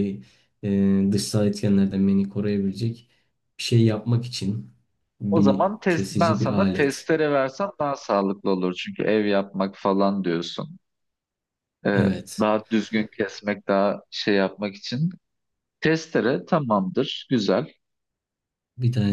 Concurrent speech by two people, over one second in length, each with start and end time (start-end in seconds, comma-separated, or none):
5.3-7.1